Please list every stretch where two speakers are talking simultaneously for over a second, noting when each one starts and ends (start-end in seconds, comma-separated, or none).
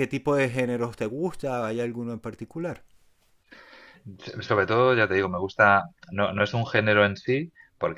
none